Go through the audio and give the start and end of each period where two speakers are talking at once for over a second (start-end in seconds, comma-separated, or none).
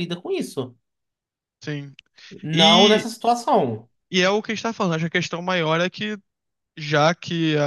none